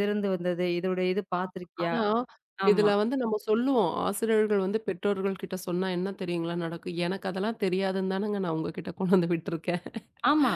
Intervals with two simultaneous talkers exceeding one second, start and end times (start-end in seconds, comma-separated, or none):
none